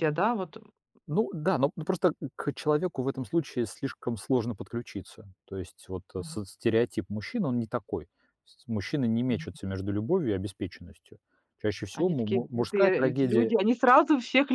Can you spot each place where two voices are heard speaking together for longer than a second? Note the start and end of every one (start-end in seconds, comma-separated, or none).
11.9-13.5